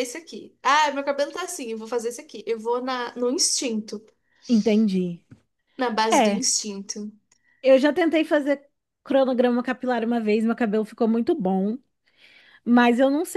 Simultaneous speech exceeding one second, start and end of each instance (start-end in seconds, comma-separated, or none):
none